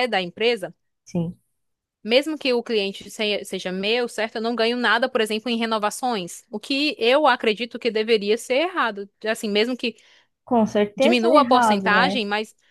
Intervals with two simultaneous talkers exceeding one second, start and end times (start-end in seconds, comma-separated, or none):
11.0-12.2